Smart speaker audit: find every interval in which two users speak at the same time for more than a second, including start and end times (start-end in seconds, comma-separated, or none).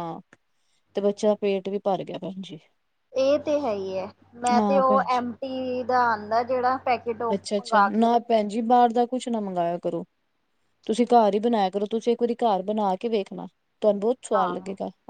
none